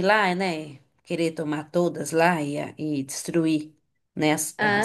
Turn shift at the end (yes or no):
no